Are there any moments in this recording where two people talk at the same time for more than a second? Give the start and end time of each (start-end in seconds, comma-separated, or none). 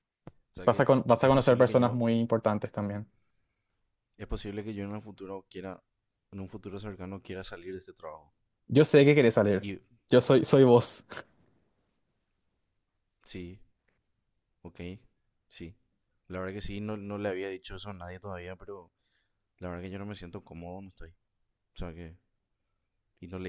0.7-2.0